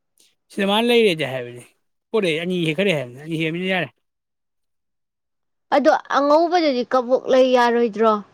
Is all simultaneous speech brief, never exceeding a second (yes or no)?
yes